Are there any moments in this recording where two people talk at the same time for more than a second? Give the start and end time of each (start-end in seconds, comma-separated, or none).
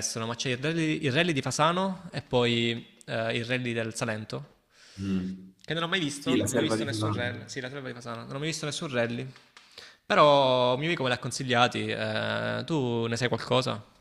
6.2-7.6